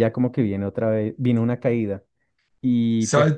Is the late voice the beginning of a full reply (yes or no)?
no